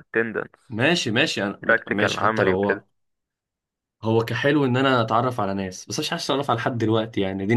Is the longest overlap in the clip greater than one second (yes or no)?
yes